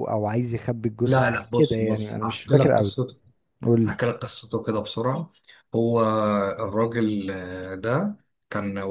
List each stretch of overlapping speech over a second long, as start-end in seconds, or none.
1.0-2.9